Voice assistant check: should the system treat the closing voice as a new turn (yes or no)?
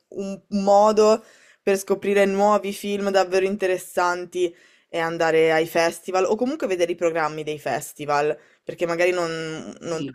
no